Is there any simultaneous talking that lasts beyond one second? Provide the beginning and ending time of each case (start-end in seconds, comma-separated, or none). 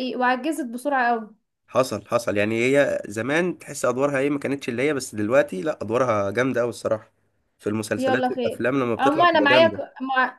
8.0-9.8